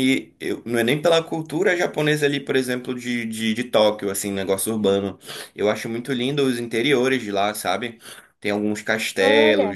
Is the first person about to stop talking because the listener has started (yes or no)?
no